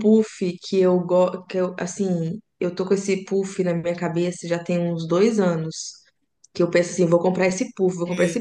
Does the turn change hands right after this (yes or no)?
no